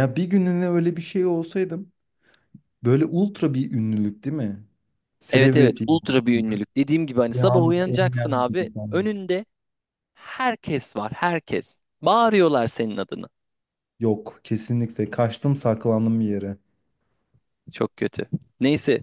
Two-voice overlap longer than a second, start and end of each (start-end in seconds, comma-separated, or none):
7.3-9.1